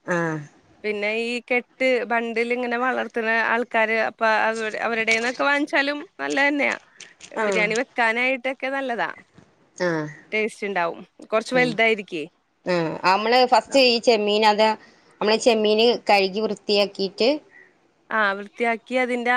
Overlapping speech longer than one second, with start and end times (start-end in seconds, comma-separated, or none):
none